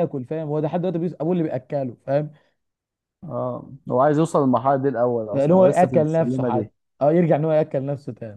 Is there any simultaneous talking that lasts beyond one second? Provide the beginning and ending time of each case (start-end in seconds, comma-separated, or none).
5.3-6.7